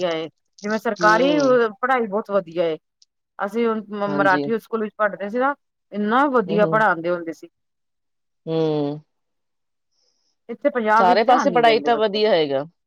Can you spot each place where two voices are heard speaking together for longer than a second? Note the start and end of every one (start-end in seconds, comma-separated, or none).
11.0-12.3